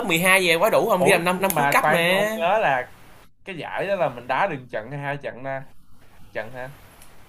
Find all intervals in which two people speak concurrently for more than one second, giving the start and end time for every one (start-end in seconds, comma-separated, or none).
1.0-2.3